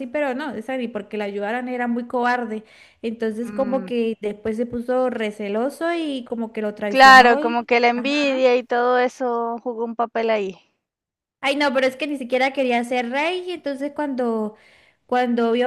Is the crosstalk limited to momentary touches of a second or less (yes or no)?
no